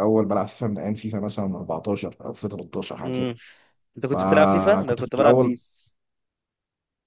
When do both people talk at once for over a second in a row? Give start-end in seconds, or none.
4.0-5.5